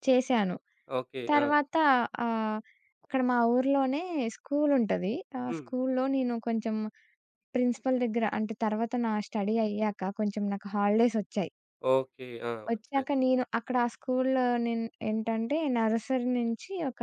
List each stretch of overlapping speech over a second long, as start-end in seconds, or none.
none